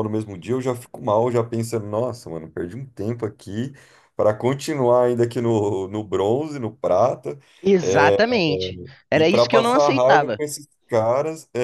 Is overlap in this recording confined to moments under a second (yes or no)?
no